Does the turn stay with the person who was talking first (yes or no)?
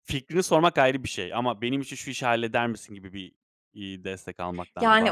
no